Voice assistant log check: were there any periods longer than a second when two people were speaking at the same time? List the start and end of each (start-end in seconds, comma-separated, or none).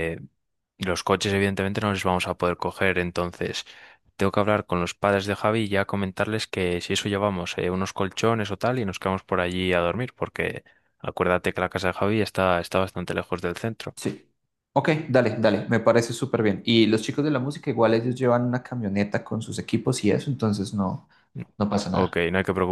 none